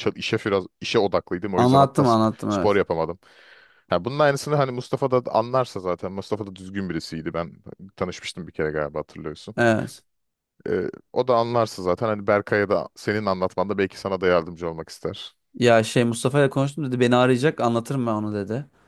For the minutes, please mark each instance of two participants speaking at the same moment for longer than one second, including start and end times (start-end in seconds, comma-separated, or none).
1.6-2.8